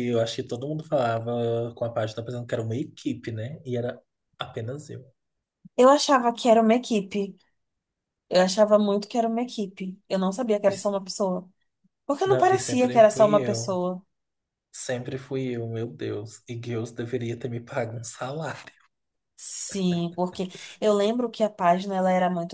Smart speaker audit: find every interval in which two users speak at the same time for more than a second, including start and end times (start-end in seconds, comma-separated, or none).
12.2-13.8